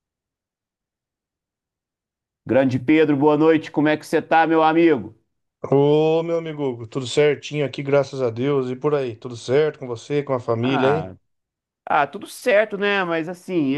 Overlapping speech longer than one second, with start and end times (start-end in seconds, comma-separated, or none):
none